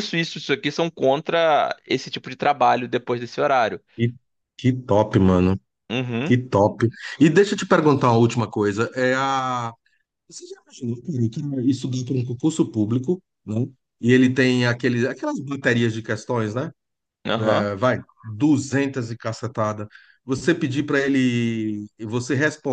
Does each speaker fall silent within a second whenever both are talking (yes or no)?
yes